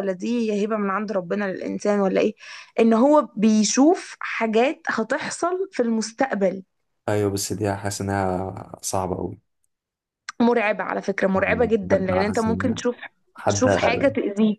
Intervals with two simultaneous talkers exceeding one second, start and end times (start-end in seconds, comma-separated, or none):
11.4-12.8